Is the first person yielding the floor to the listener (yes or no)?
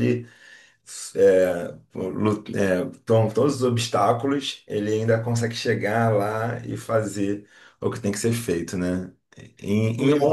no